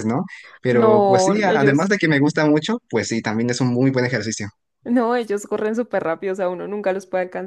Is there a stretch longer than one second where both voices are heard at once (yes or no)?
yes